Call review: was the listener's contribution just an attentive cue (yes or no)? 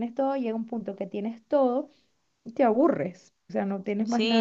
no